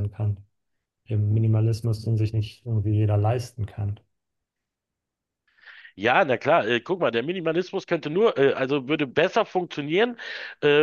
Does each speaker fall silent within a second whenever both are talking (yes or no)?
yes